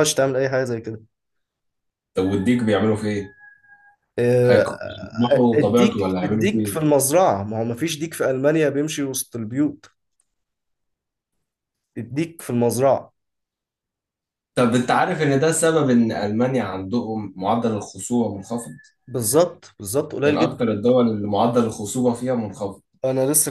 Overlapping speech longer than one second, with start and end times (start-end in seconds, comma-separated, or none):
5.3-6.8